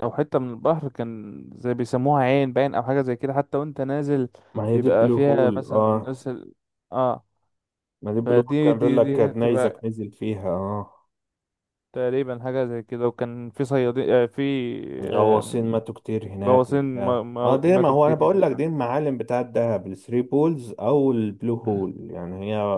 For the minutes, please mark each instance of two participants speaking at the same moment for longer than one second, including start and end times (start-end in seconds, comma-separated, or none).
4.7-6.2, 8.2-9.8, 16.4-18.4